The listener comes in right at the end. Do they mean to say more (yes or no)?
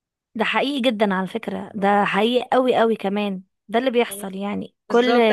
yes